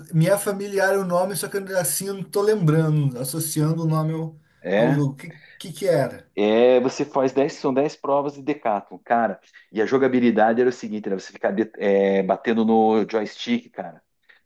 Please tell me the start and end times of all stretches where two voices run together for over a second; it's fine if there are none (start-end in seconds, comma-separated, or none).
none